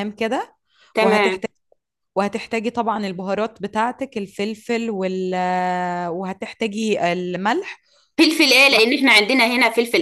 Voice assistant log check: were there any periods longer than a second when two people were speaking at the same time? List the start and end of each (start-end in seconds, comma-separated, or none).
none